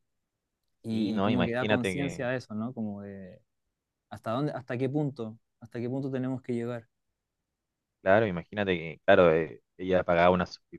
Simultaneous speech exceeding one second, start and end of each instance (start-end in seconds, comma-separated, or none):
0.9-2.3